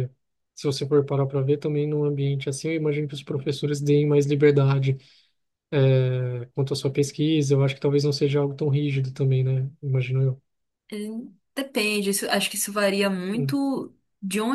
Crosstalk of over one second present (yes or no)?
no